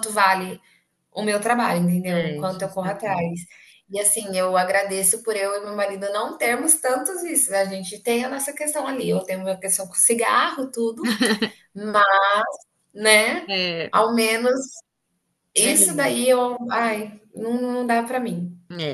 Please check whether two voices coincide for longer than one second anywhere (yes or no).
yes